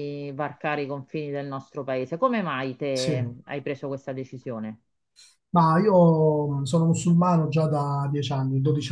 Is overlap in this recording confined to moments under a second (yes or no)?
yes